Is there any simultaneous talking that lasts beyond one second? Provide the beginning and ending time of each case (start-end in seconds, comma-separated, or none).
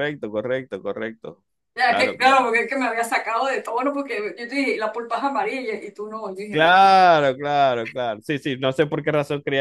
none